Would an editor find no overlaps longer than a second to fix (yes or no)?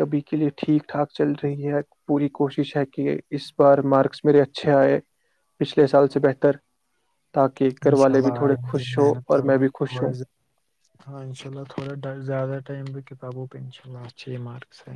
no